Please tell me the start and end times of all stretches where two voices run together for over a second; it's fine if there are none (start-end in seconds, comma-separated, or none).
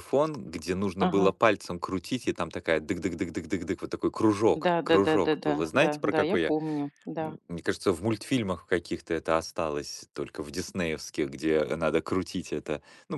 4.6-6.5